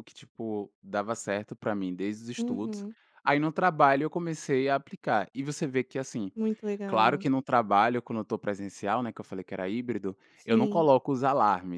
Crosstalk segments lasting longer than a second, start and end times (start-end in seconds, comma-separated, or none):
none